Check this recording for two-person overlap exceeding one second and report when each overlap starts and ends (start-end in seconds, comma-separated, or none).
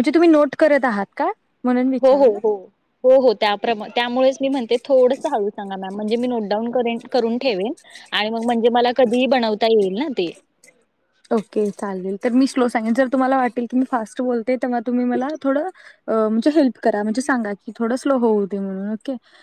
none